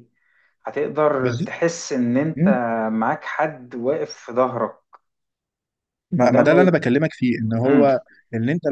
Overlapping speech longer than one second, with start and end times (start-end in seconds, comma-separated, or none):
none